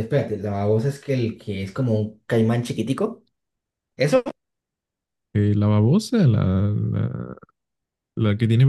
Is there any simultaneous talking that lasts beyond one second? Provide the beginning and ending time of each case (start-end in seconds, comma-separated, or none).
none